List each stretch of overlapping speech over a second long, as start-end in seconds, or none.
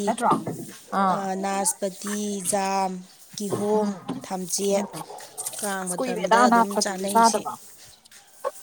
5.8-7.4